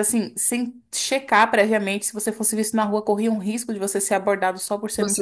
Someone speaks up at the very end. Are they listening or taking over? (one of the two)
taking over